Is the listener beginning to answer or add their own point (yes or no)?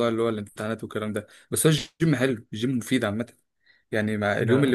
no